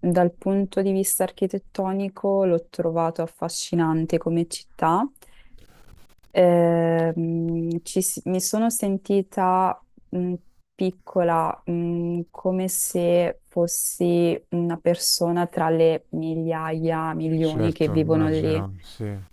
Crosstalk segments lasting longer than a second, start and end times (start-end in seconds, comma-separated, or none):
17.4-18.6